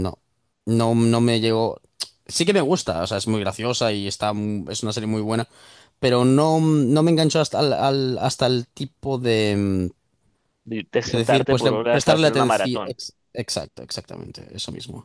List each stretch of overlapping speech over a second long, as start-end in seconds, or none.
11.0-13.0